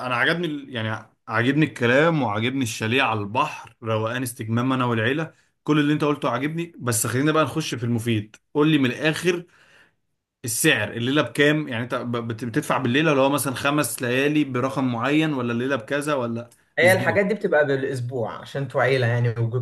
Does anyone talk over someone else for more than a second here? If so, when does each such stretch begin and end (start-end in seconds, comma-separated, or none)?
none